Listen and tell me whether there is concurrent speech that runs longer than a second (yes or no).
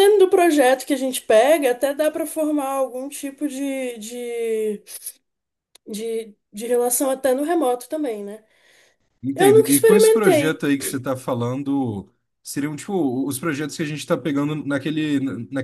yes